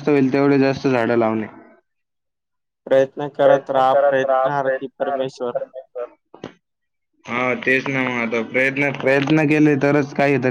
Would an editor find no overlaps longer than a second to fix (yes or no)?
no